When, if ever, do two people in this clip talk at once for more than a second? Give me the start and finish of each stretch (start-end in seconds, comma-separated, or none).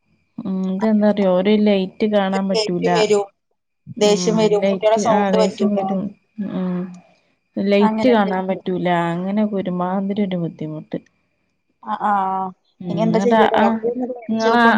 4.1-5.8